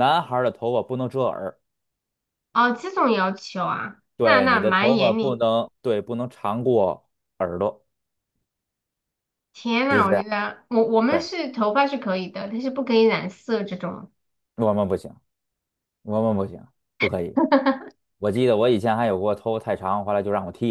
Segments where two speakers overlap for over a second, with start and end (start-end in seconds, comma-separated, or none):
4.2-5.4